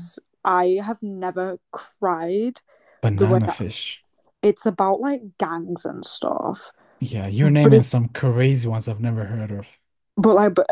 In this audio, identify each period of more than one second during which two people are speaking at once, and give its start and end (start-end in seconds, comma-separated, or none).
none